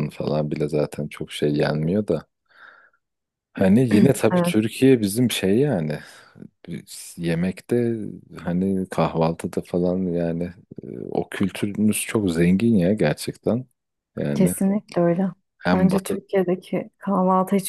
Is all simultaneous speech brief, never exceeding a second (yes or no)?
yes